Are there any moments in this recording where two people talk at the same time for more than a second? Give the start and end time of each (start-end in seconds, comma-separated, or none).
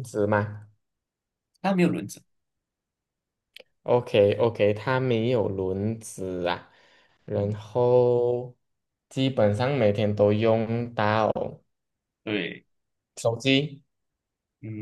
none